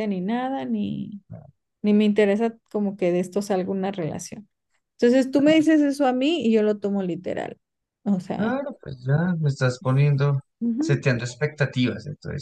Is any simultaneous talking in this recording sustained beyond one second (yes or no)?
no